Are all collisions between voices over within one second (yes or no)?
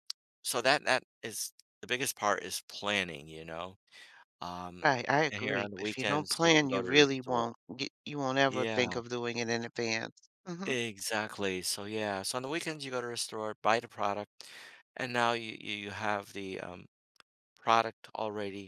no